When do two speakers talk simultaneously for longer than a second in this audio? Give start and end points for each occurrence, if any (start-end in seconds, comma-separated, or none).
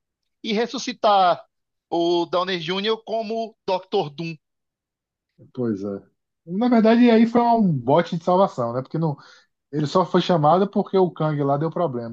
none